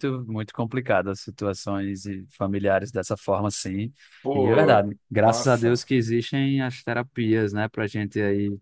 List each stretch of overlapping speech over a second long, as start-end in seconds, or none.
4.3-5.9